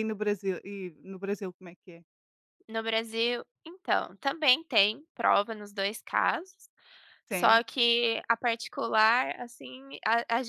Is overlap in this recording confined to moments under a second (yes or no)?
yes